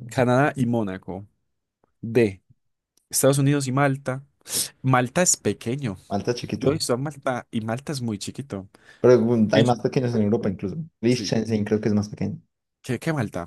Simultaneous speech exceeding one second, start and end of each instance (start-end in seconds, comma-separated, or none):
none